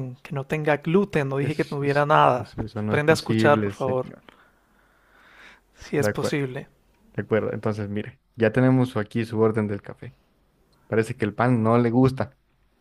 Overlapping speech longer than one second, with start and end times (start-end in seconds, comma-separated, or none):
1.4-4.1